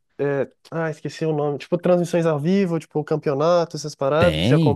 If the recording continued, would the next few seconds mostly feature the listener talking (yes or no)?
yes